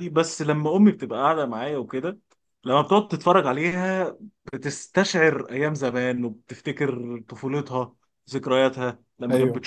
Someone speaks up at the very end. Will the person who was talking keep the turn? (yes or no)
yes